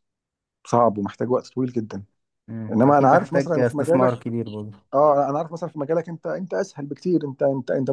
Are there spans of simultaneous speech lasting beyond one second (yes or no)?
yes